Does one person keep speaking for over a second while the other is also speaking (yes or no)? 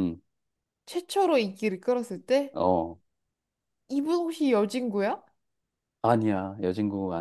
no